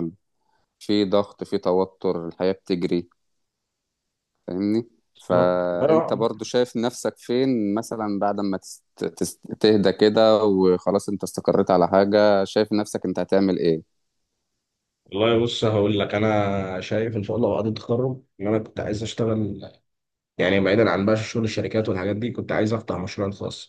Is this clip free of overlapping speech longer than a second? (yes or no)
yes